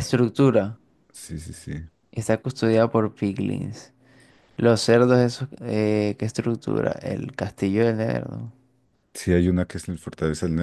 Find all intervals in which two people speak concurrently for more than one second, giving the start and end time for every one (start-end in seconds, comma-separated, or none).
none